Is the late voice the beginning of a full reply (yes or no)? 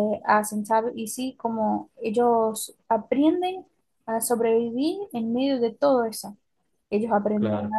no